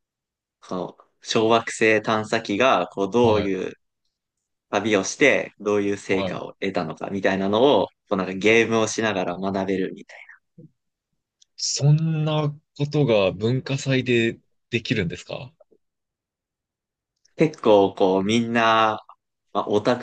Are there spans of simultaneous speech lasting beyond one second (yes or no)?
no